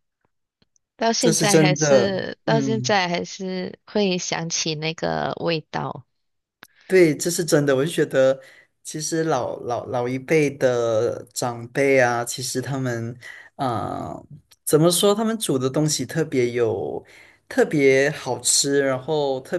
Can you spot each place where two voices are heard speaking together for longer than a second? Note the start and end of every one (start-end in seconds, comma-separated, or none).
1.2-3.0